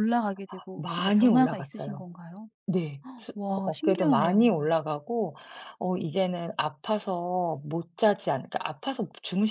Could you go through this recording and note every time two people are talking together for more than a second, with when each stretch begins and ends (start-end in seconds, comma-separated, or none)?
0.7-2.0, 3.4-4.7